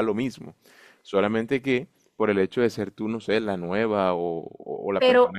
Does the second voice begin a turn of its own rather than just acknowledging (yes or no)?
yes